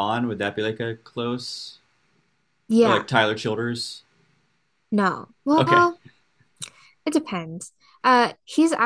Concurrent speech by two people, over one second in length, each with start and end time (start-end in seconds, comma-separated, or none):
none